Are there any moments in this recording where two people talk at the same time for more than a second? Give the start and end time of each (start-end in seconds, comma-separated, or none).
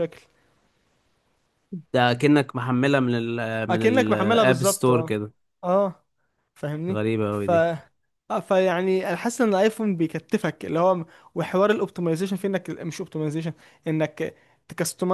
3.7-5.1